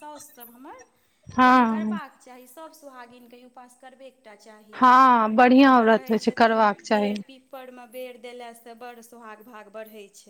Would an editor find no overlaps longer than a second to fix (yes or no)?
no